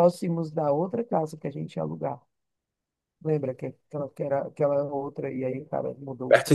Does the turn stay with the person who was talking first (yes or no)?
no